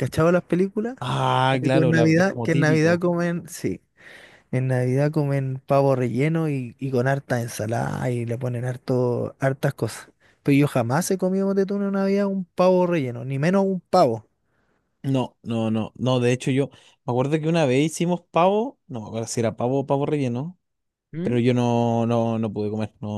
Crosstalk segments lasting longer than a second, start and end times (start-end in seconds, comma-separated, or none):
1.5-3.0